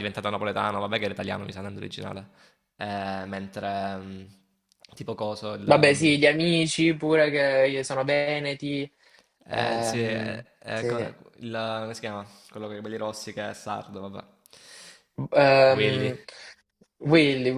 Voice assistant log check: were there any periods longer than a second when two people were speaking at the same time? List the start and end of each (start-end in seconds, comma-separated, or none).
9.5-11.0